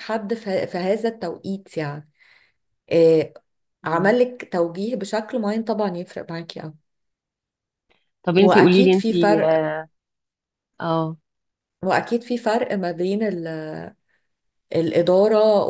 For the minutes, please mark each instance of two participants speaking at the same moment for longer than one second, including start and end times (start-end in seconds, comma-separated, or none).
8.3-9.7